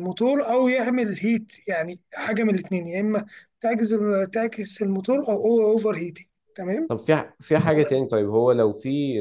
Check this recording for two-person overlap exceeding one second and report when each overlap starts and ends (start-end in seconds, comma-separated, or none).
none